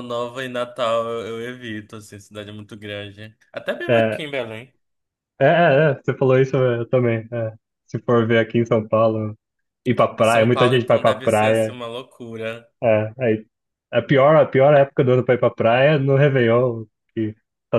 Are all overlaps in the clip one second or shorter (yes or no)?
no